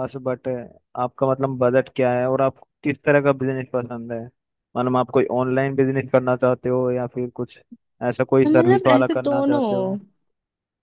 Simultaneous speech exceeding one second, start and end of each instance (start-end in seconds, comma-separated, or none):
8.5-10.0